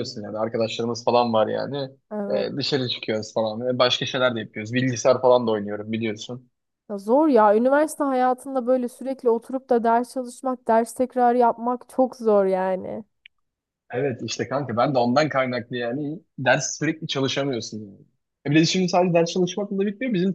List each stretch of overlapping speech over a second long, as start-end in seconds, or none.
none